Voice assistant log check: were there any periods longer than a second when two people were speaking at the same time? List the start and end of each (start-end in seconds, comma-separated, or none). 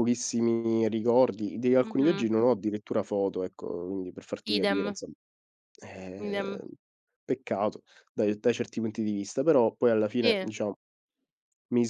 none